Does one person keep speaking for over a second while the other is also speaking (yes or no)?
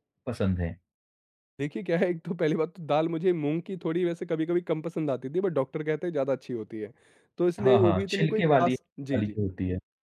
yes